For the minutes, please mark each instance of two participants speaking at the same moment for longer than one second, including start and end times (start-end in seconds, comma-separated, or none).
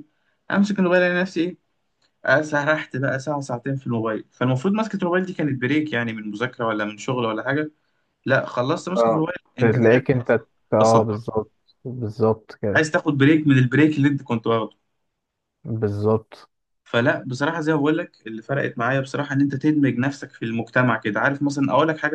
8.9-11.2